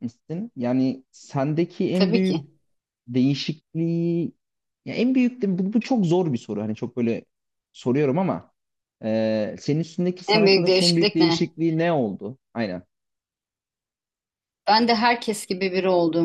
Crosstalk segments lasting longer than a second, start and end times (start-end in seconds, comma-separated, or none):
10.3-11.5